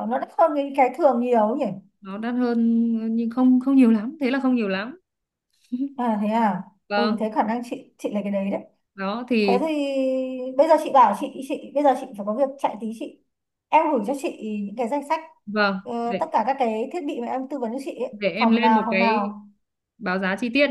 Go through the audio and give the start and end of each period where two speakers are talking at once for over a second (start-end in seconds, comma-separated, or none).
18.1-19.4